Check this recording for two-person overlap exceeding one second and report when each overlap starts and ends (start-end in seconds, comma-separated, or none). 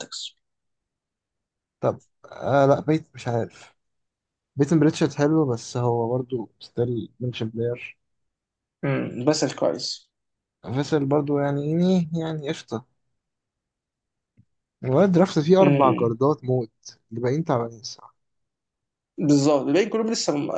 none